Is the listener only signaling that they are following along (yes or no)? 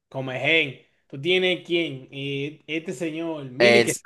no